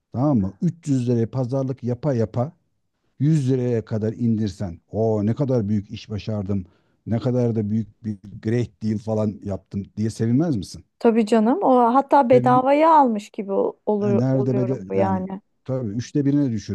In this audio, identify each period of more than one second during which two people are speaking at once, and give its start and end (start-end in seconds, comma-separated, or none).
14.0-15.3